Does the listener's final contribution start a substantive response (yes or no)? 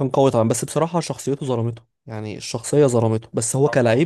yes